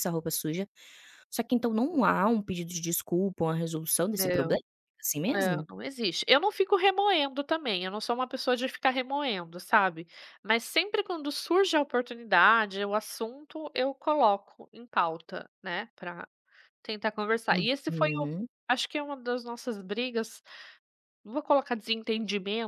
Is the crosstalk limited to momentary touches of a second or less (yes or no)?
yes